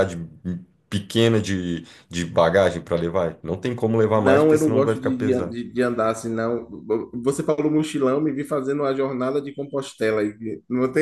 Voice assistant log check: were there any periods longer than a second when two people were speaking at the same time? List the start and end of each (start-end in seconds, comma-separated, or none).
4.1-5.5